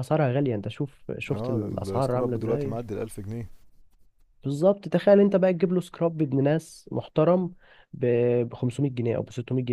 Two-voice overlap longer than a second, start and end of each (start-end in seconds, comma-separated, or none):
1.3-2.7